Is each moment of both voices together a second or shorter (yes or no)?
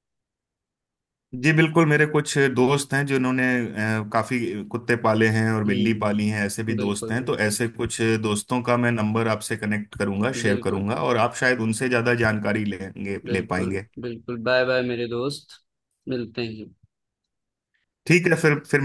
no